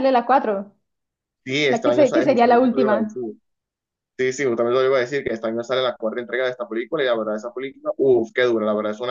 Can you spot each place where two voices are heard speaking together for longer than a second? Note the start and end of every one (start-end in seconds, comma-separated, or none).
1.7-3.2